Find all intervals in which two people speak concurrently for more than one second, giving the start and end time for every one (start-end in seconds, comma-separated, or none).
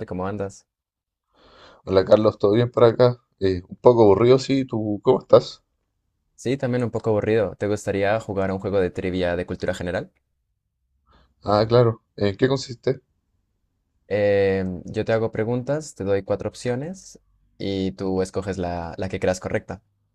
none